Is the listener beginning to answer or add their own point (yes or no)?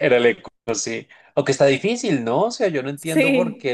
no